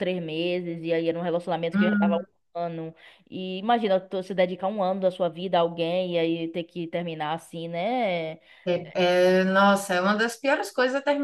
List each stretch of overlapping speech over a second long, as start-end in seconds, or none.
none